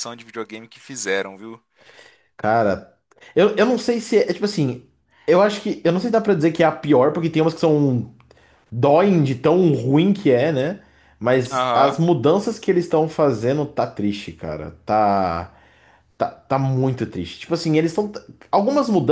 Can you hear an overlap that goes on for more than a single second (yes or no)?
no